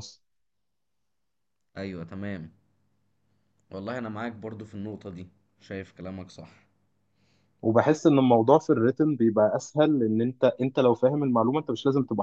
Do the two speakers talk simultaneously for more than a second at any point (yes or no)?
no